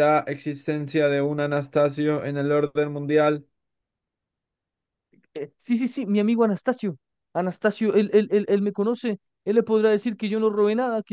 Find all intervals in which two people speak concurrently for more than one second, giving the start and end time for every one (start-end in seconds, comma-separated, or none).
none